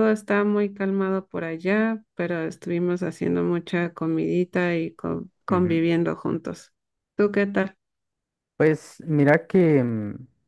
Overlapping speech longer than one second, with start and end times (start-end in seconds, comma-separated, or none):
none